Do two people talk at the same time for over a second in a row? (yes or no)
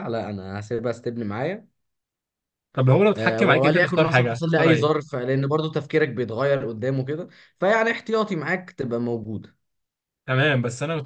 yes